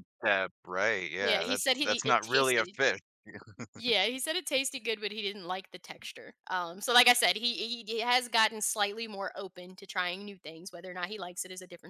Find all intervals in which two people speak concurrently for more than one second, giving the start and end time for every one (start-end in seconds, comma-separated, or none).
1.2-2.8